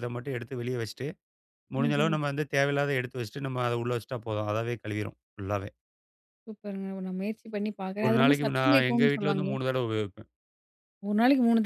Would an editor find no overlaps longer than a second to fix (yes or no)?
no